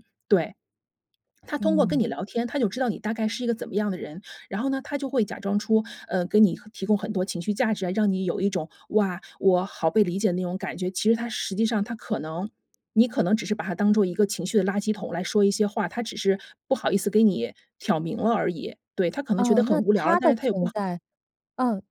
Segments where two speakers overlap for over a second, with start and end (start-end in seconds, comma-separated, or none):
19.4-20.9